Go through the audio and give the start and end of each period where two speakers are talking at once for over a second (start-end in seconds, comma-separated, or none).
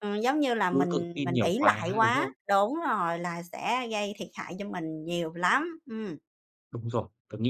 0.7-2.3